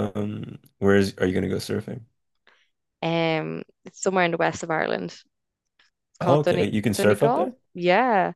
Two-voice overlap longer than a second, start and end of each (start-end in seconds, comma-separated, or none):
6.2-7.5